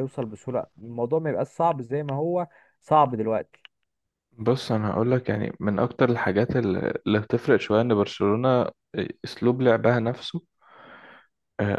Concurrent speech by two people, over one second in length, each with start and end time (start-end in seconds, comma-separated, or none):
none